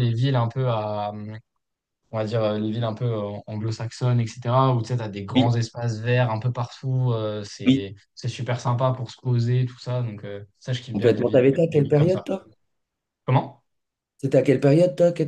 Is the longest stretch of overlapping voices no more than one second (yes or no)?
no